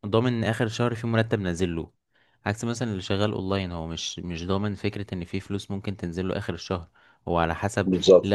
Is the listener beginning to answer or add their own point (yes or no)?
no